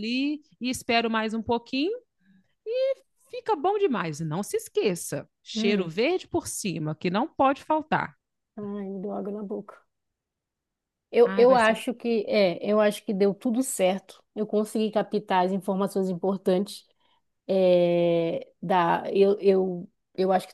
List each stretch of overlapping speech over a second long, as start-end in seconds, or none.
none